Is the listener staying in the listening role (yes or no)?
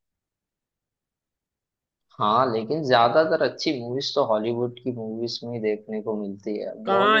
no